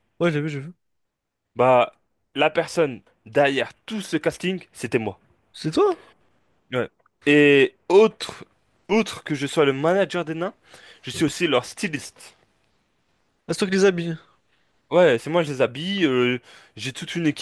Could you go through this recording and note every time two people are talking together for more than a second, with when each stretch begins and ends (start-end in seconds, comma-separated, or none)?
none